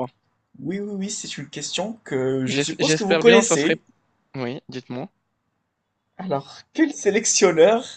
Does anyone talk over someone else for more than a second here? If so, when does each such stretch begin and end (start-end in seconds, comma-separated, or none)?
2.5-3.7